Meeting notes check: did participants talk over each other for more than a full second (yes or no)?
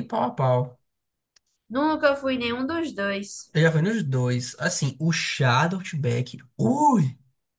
no